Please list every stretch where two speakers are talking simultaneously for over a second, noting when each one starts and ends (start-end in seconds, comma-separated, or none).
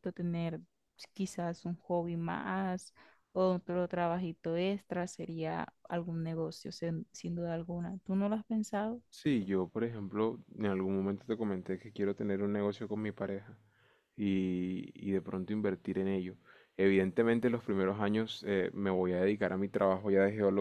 none